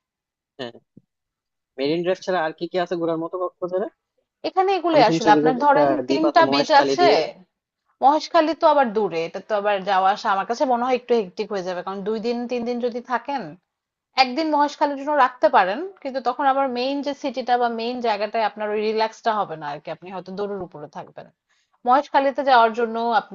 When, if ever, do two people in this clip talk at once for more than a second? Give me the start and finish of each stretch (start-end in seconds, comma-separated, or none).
4.9-7.1